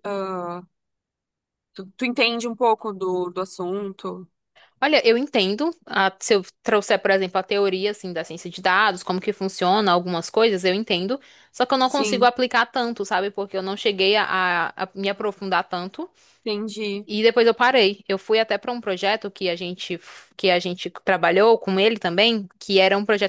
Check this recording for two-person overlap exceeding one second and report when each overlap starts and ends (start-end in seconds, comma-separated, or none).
none